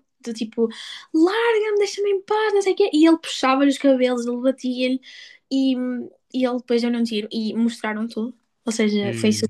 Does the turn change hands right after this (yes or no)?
no